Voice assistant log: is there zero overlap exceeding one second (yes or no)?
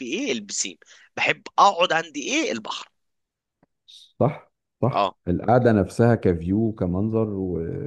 yes